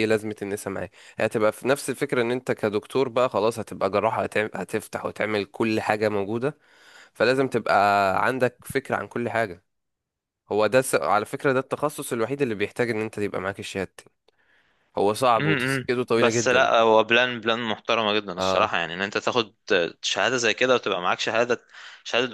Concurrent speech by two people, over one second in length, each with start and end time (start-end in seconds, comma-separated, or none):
15.4-16.7